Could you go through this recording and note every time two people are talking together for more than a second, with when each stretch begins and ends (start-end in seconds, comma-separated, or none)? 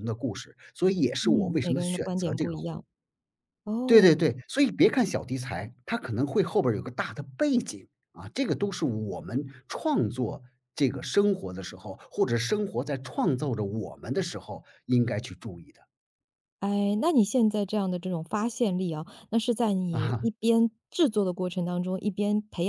1.2-2.8